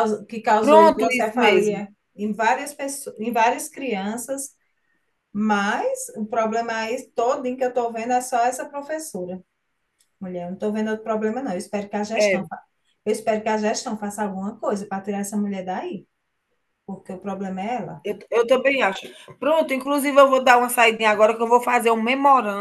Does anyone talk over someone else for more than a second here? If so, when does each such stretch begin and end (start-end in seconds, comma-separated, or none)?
0.6-1.8